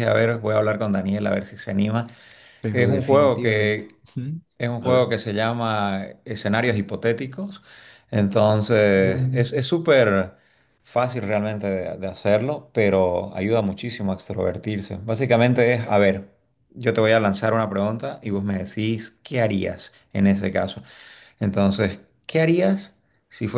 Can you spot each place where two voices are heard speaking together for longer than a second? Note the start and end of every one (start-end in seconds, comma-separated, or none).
2.7-4.0